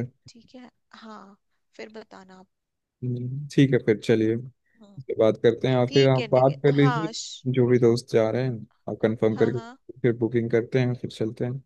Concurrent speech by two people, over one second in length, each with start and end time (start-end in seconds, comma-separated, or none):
5.9-7.4